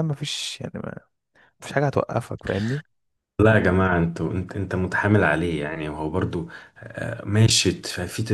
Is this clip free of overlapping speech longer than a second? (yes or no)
yes